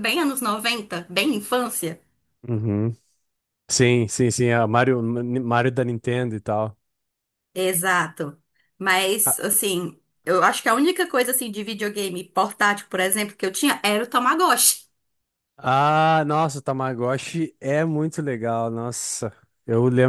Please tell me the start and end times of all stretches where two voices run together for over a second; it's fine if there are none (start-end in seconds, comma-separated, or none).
none